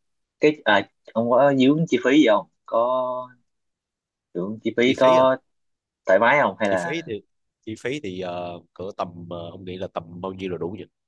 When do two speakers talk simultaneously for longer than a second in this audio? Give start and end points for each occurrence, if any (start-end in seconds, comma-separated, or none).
none